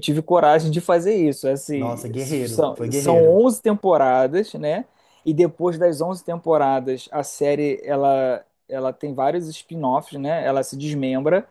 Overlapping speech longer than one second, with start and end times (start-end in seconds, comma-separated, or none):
1.7-3.4